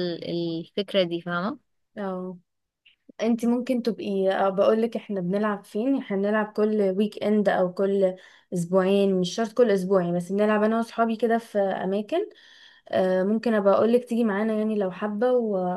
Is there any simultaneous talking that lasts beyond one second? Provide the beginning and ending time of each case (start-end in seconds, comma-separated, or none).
none